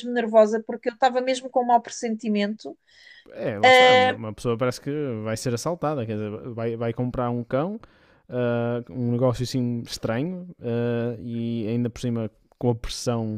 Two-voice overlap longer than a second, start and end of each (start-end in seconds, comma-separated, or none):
none